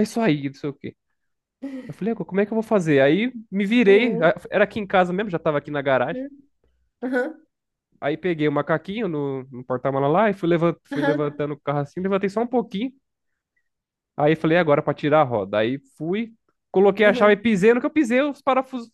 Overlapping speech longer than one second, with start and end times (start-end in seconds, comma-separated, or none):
none